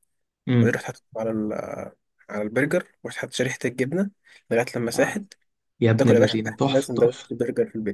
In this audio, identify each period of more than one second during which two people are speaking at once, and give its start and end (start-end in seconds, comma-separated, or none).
6.0-7.3